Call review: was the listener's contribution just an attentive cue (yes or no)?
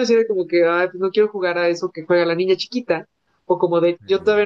yes